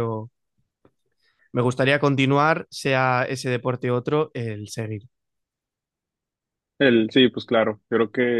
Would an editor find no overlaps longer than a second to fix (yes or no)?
yes